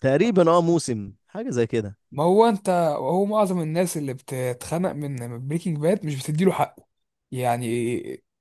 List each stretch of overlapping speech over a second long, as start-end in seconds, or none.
none